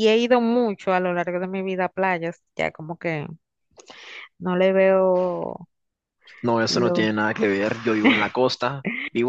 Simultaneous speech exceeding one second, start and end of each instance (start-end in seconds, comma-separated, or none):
none